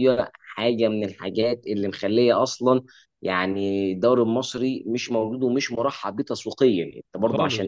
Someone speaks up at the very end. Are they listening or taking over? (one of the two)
listening